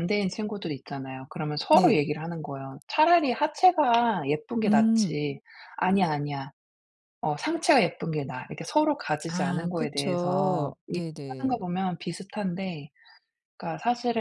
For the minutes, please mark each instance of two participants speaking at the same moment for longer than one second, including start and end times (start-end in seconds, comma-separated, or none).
9.3-11.6